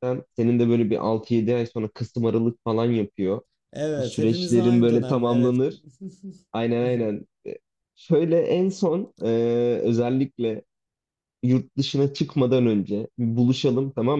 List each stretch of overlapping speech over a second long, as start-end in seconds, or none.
4.0-5.6